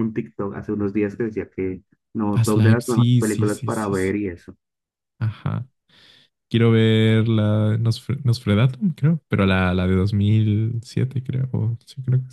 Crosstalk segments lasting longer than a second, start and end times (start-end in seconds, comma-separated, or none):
2.3-4.1